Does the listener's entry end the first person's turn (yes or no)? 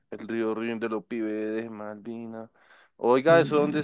no